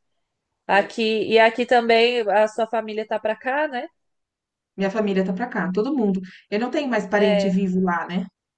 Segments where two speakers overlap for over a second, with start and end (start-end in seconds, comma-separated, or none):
none